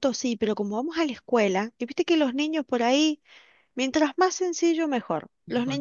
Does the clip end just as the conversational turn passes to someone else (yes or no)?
no